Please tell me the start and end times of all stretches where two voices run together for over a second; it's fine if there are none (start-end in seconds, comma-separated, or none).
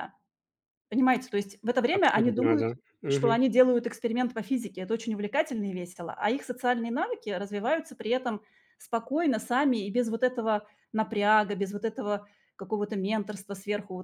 1.9-3.4